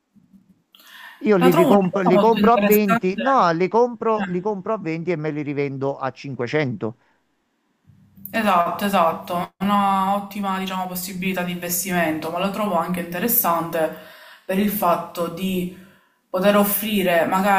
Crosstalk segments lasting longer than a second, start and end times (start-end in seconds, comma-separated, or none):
1.4-3.2